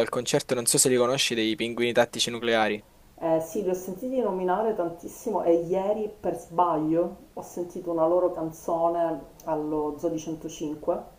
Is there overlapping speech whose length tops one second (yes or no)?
no